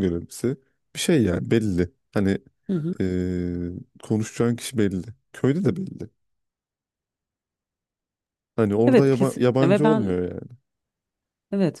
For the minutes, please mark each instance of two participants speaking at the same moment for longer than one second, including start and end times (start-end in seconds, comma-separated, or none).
8.9-10.1